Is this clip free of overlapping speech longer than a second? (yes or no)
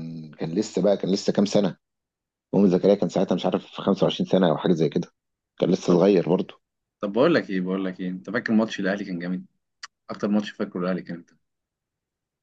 yes